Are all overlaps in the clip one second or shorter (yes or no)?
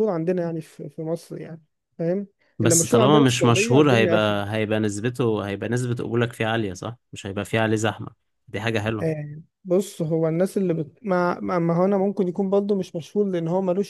no